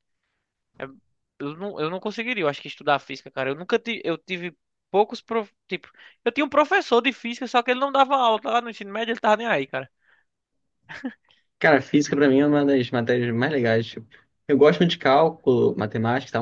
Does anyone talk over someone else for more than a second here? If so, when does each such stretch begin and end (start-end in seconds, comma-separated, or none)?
none